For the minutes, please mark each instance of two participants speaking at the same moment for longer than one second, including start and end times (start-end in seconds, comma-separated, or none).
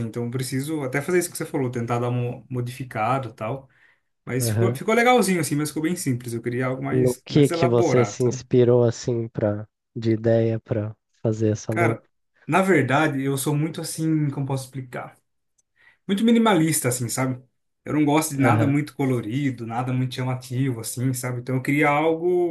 6.9-8.4